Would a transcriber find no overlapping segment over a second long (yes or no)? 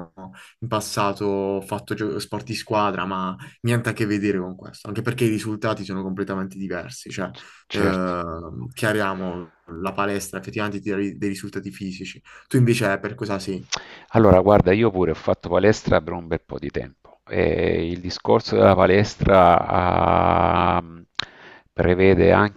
yes